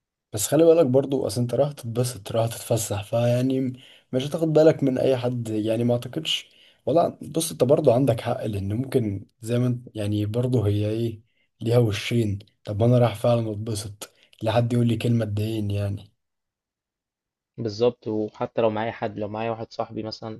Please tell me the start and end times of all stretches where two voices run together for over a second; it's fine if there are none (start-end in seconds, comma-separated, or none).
none